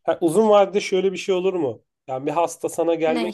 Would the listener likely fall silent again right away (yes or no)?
yes